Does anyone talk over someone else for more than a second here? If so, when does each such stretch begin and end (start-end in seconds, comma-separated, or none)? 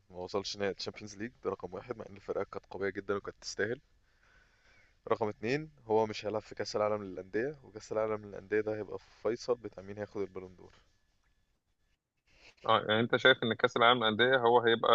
none